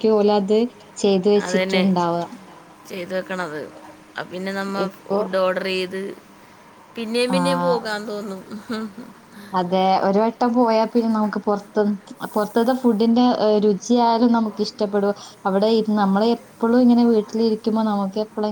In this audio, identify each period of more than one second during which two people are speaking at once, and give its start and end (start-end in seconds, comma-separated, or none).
none